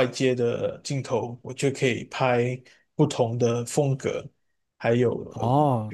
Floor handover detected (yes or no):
no